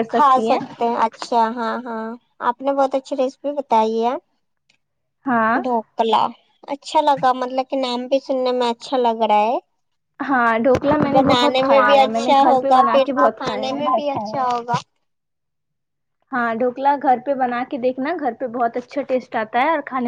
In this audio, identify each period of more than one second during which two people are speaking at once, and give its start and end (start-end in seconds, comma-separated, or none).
11.1-13.8